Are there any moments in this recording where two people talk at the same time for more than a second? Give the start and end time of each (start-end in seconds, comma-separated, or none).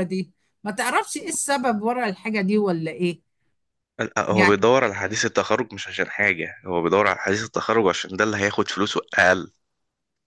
none